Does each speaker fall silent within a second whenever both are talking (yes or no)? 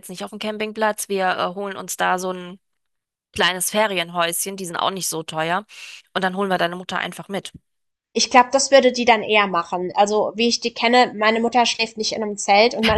yes